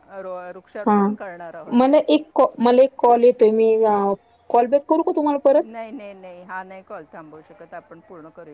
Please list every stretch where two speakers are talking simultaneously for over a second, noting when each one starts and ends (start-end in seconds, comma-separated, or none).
none